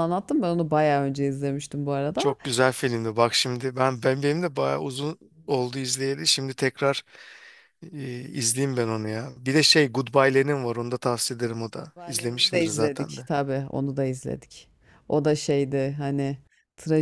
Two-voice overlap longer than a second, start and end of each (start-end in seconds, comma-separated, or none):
11.8-13.3